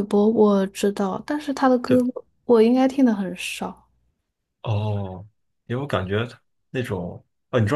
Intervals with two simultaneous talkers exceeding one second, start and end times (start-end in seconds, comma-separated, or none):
none